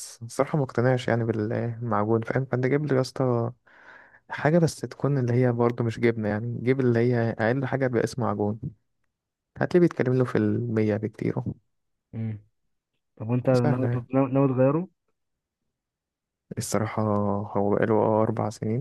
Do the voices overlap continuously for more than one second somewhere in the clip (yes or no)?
no